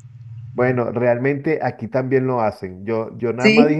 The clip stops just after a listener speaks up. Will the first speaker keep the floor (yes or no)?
yes